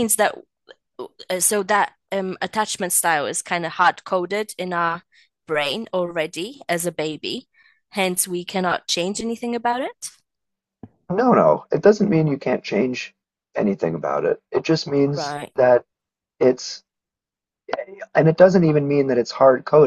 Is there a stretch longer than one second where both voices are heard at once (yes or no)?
no